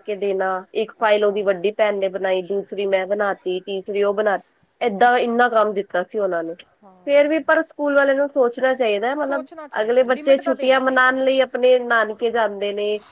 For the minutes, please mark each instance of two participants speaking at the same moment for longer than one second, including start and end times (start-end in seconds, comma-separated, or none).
9.2-11.2